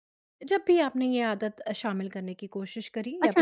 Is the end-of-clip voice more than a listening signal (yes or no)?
yes